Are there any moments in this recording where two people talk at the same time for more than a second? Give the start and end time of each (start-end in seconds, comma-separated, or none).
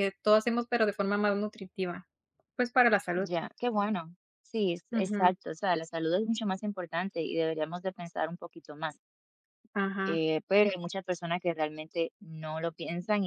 none